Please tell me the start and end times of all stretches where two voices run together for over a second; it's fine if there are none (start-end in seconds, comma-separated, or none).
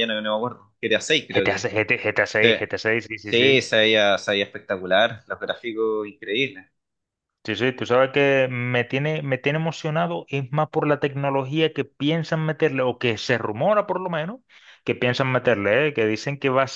none